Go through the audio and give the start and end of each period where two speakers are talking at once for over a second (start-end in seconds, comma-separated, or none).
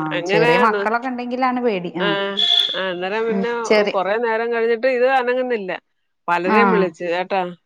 none